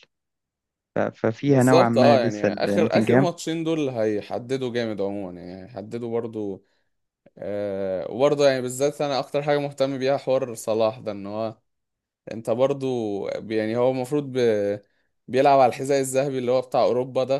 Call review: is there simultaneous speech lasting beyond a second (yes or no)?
yes